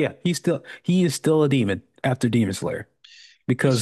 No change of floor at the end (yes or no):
yes